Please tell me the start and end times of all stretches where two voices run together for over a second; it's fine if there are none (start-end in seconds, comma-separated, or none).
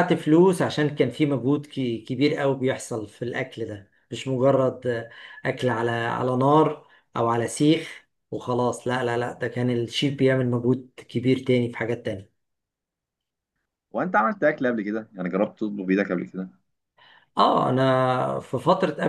none